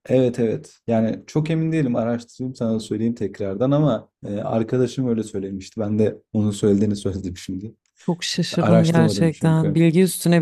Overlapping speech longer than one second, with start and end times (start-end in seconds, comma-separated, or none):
8.6-9.9